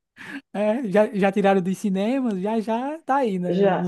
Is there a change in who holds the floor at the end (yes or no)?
yes